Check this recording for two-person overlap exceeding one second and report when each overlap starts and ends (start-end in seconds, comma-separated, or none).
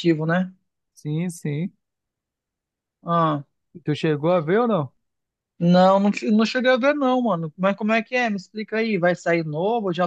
none